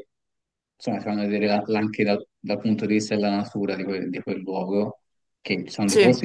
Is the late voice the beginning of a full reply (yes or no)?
no